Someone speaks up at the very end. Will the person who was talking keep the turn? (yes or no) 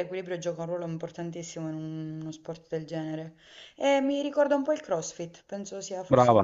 no